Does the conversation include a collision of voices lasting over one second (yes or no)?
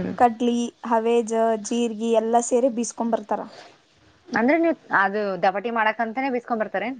no